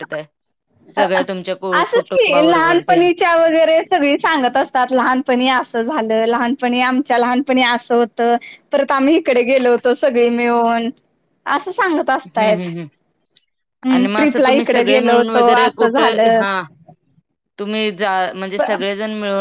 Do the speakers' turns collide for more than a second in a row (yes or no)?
yes